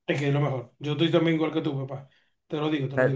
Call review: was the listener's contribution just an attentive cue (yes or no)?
no